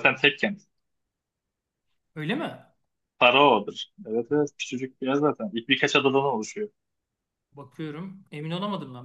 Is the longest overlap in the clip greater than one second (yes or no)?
no